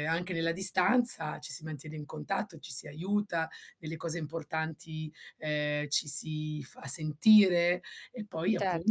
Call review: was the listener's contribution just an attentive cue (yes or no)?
no